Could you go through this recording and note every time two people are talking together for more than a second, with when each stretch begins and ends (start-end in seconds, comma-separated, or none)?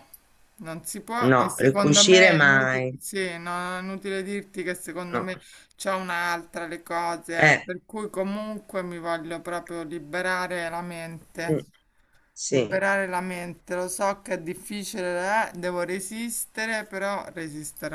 1.3-3.0